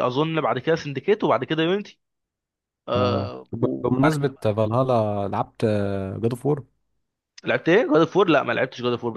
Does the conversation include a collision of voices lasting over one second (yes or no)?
yes